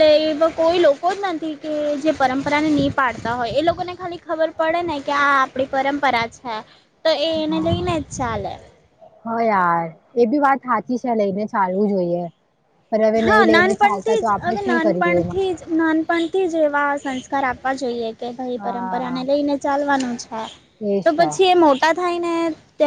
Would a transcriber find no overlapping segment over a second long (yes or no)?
no